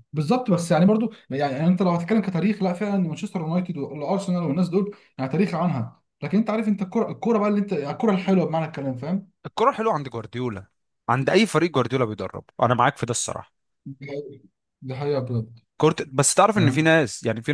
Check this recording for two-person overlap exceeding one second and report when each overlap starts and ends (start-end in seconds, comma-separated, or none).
none